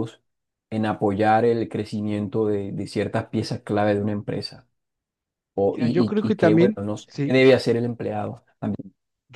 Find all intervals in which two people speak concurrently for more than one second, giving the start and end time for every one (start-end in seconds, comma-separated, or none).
5.7-7.4